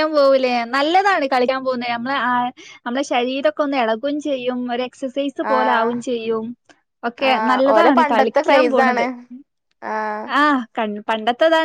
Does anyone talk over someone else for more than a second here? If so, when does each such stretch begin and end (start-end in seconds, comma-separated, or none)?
7.3-9.1